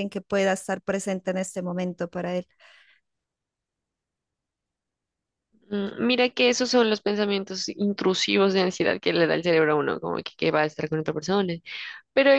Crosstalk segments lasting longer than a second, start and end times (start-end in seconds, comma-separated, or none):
none